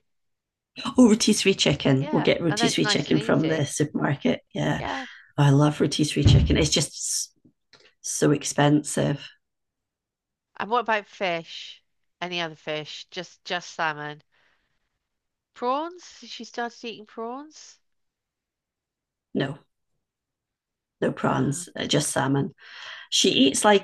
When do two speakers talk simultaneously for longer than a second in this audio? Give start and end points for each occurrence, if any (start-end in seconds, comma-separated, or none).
2.0-3.7